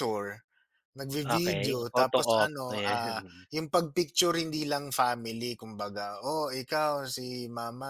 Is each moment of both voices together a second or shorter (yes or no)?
no